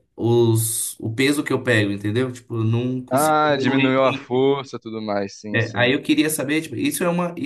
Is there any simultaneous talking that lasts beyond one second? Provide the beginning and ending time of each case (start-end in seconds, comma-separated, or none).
3.1-4.5